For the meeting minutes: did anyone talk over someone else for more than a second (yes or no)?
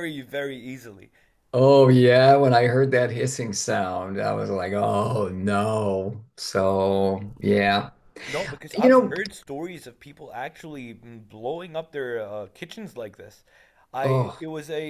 no